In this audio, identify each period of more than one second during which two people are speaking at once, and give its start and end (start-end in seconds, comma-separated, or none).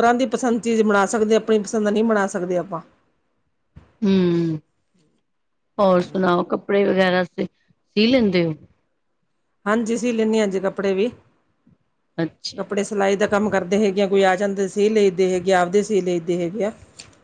none